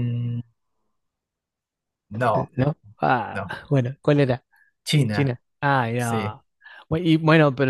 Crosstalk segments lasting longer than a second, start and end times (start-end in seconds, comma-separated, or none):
none